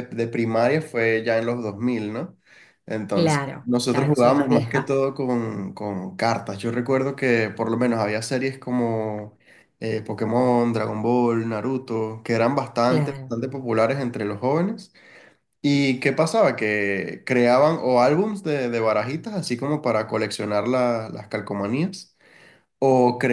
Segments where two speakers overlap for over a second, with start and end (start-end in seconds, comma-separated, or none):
3.1-5.0